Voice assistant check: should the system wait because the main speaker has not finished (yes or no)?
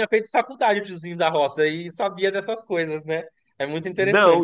no